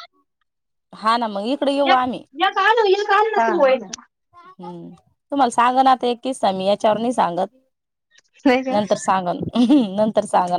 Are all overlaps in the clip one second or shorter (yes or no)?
yes